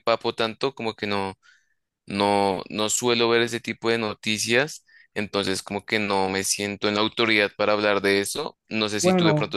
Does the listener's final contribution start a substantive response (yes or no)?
no